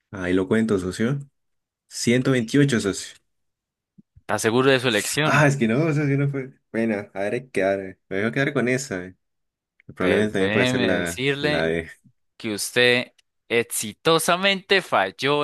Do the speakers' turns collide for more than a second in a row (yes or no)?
yes